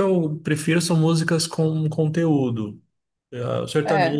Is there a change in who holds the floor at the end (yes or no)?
no